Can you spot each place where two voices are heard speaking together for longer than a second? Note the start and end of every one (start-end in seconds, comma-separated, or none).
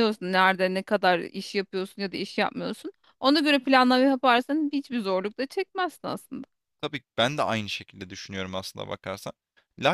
none